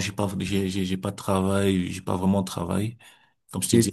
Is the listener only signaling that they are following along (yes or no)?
yes